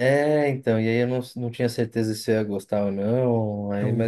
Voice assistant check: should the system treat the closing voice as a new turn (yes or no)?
no